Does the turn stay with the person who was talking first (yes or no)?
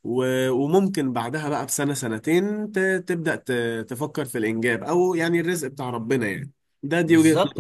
no